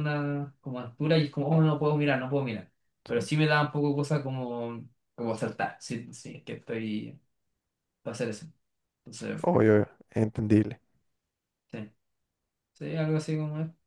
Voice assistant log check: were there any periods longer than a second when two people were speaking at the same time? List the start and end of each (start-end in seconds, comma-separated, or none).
none